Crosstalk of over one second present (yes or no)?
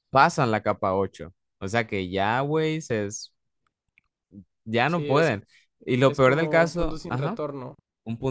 yes